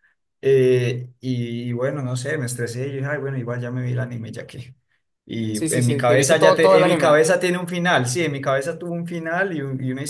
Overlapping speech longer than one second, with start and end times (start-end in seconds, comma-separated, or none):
5.5-7.2